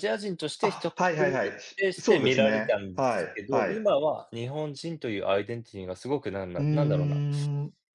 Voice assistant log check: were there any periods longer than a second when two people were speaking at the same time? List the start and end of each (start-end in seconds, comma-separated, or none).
0.6-3.9